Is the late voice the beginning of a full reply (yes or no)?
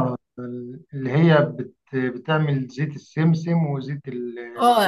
yes